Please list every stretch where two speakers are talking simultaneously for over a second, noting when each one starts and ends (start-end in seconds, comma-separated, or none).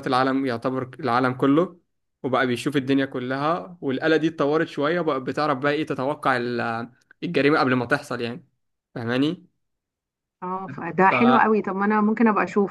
none